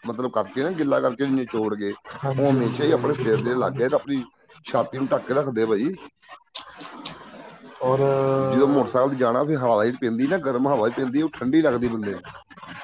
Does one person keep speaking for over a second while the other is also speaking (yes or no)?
yes